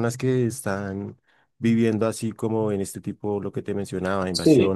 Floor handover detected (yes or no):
no